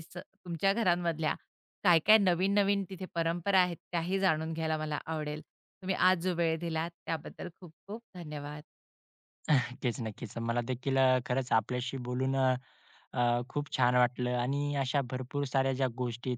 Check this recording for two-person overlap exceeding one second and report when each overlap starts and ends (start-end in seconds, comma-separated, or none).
none